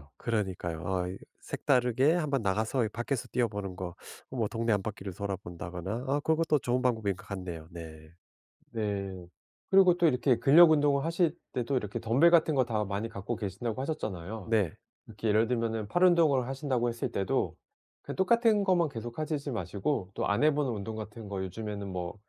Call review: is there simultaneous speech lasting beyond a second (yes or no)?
no